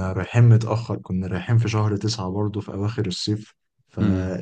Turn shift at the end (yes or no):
no